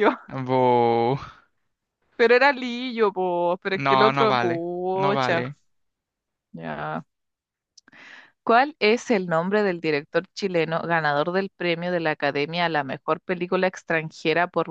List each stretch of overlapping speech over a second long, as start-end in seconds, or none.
3.7-5.4